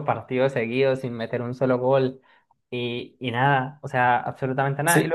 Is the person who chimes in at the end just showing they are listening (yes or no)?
no